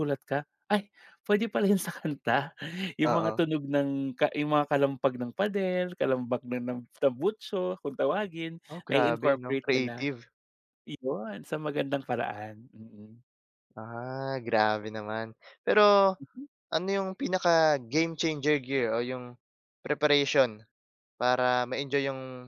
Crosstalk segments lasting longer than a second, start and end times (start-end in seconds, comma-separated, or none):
8.7-10.1